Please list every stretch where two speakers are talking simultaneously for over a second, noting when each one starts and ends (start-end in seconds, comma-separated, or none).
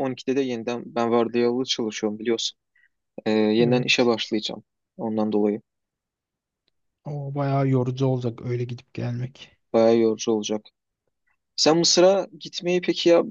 none